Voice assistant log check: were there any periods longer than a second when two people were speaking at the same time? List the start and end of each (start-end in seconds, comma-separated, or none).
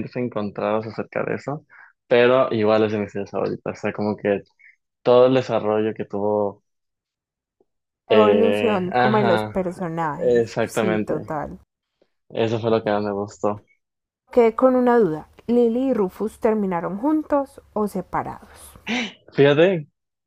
8.1-9.6, 10.2-11.4